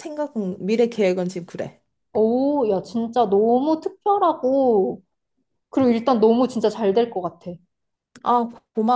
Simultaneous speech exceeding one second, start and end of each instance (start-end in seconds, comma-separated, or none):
none